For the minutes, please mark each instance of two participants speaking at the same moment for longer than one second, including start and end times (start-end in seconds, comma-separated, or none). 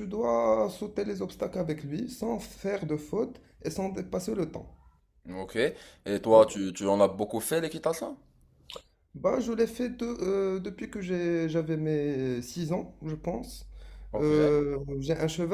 none